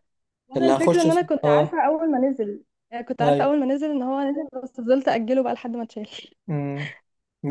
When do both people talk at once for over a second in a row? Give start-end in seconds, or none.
0.6-1.8